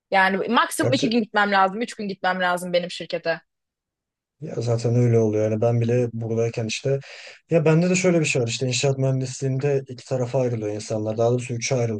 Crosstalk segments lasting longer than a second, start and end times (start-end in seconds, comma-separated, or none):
none